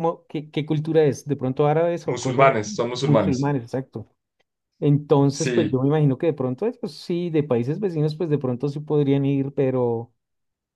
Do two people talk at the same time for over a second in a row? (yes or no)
yes